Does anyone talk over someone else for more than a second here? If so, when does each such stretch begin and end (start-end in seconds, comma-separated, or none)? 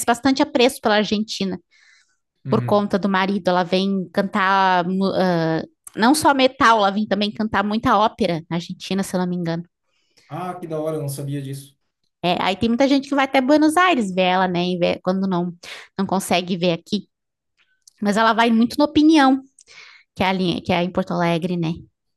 none